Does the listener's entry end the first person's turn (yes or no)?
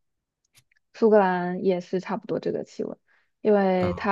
no